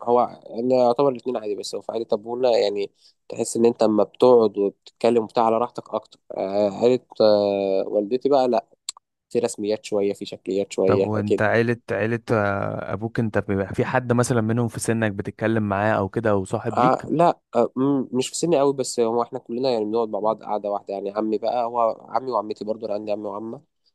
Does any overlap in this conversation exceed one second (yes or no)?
no